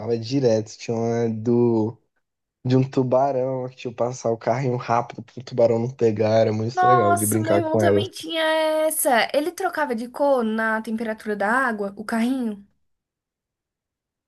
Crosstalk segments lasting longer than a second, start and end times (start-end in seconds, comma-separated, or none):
6.8-8.1